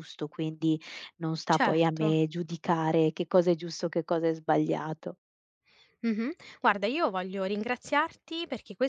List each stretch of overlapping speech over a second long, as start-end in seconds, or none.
none